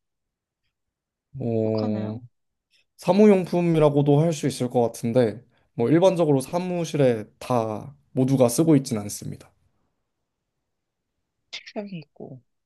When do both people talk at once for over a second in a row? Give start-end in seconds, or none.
none